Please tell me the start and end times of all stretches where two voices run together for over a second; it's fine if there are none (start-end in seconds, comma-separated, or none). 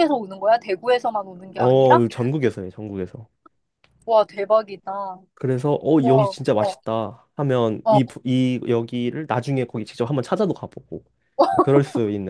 none